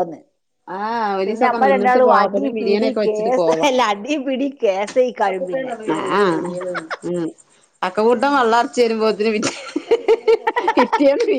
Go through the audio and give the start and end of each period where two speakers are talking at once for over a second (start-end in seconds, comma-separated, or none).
1.2-3.3